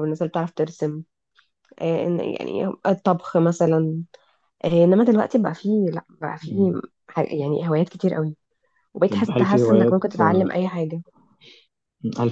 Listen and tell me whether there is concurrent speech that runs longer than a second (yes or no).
yes